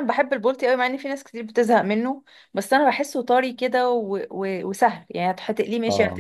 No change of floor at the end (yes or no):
yes